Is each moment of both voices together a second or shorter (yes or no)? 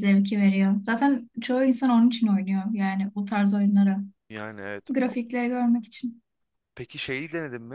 yes